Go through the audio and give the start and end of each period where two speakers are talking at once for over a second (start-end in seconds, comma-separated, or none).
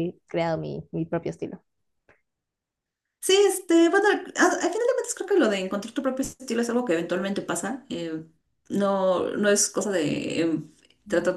none